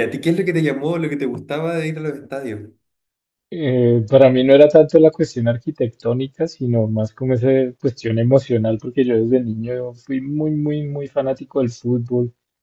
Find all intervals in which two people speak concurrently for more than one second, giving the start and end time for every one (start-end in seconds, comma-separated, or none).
none